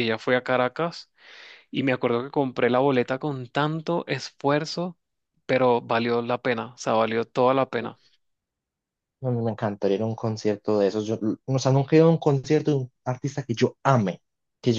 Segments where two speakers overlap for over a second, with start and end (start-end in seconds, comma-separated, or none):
none